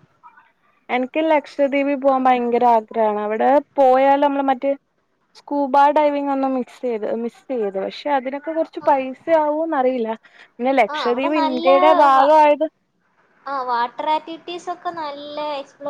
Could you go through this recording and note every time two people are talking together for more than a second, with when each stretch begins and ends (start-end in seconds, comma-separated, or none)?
10.9-12.3